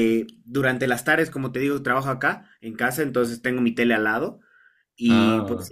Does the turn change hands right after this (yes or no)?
no